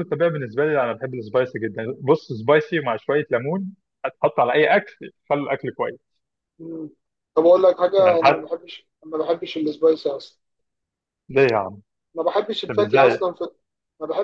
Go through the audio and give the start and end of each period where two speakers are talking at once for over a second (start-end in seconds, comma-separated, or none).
none